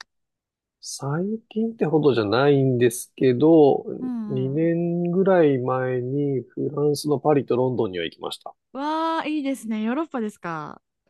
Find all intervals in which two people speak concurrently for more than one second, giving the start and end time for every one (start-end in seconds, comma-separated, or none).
none